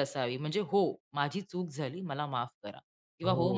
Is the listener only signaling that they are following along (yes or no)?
no